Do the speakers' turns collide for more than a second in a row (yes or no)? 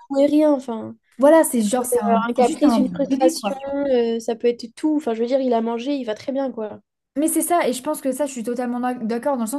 yes